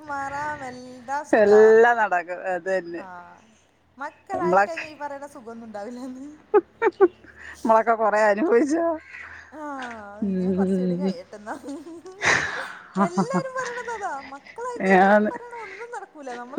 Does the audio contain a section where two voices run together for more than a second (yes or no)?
no